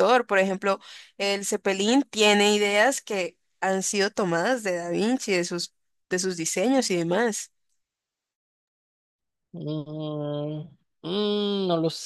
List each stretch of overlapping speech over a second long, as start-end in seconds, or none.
none